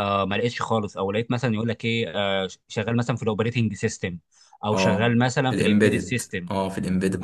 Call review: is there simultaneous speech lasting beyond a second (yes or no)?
yes